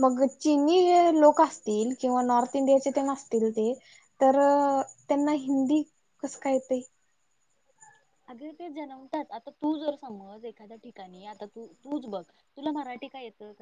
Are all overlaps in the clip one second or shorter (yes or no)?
yes